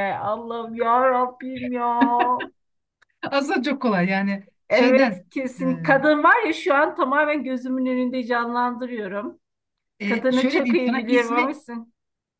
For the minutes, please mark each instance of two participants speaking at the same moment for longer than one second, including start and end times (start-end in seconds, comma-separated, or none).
10.1-11.6